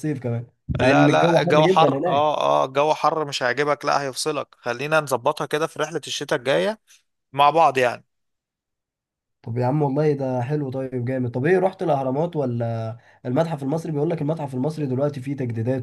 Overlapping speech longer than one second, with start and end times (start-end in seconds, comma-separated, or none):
0.8-2.3